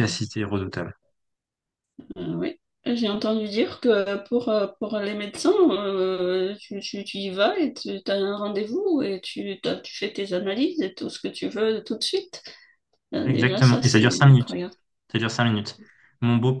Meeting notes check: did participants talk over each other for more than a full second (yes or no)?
yes